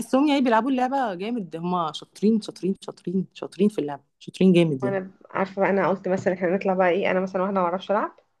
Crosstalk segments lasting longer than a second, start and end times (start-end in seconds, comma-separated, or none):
none